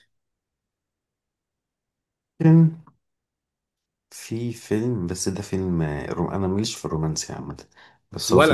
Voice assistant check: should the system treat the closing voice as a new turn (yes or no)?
no